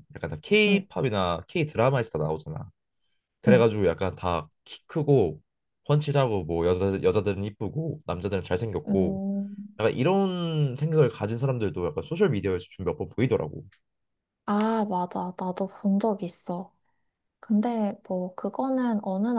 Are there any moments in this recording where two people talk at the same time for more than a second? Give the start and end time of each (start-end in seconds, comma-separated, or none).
none